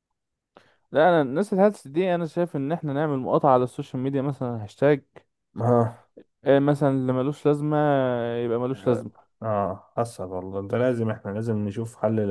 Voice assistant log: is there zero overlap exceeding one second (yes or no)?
yes